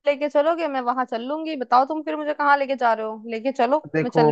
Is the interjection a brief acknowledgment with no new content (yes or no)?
no